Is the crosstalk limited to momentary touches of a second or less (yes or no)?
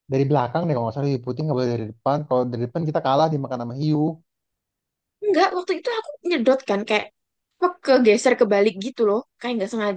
yes